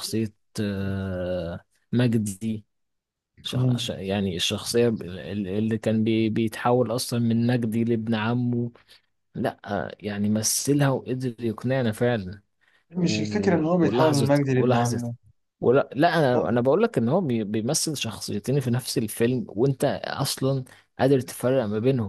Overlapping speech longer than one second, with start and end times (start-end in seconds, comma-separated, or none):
12.9-15.0